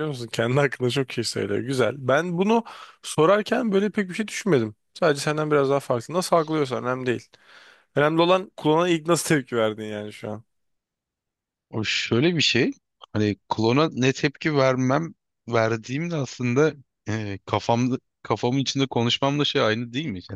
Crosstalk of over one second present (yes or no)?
no